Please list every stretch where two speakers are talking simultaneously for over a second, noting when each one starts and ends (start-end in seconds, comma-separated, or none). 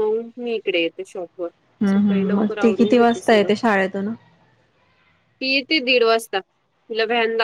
1.8-3.5